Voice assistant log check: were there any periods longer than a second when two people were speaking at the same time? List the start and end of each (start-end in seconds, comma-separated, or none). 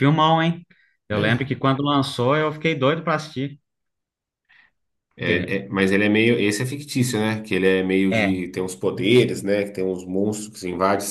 none